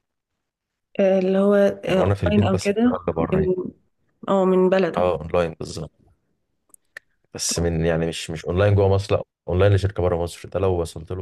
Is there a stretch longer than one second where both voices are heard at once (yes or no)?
yes